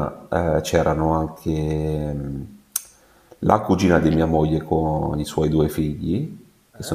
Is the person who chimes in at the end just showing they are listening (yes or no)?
yes